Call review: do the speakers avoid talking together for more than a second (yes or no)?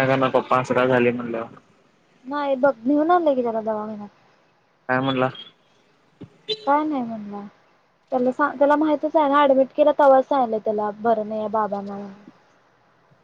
yes